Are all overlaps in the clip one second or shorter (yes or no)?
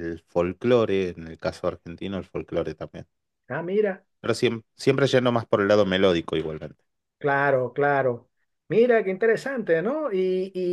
yes